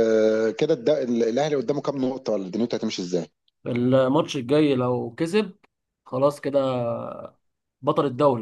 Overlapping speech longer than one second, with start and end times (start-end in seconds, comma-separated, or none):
none